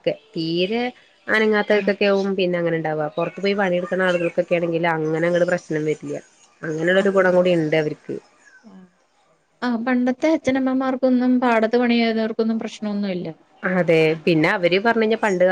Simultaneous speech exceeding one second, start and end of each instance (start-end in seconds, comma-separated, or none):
none